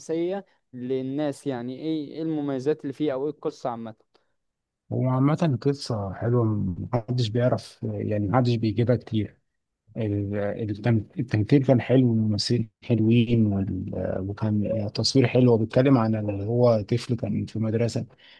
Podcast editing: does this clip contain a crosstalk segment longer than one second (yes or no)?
no